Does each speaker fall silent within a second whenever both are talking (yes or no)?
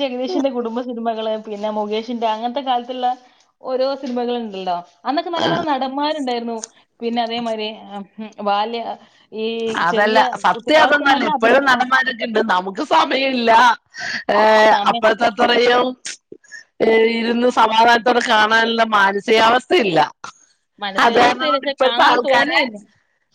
no